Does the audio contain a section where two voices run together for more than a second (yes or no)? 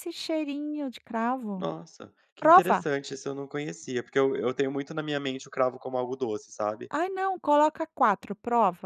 no